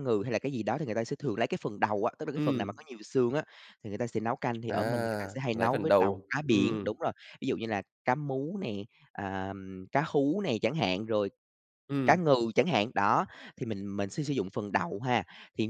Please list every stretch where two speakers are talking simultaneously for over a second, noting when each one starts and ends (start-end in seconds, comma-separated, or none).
5.5-7.0